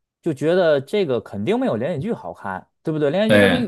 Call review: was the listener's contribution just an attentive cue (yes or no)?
yes